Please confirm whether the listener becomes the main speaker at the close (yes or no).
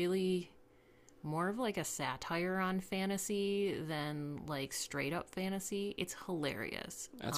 yes